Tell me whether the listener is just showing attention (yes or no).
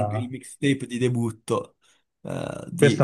no